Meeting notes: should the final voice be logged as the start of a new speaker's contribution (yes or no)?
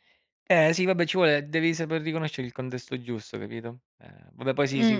yes